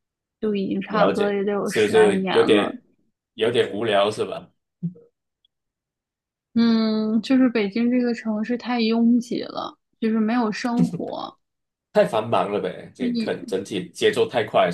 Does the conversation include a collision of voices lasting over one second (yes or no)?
yes